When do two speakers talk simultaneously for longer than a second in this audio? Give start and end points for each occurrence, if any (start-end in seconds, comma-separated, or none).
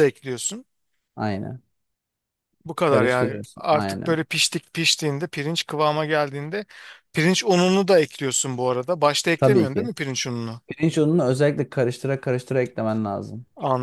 2.9-4.2